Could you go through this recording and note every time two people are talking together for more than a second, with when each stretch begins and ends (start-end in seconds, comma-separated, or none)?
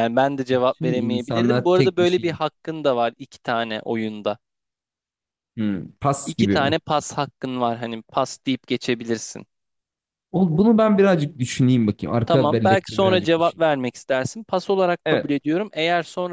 0.5-2.4, 12.3-13.7